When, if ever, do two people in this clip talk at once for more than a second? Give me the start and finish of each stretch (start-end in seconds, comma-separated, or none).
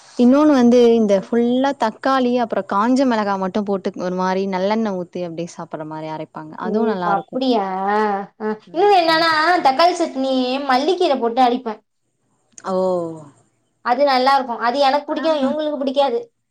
none